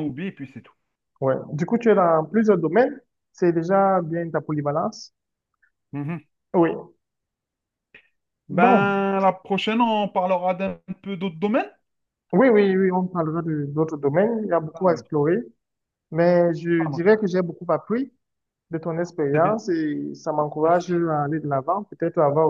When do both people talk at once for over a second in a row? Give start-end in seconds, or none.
none